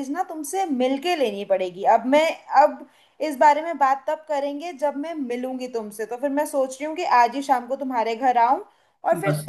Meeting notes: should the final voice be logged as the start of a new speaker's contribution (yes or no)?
no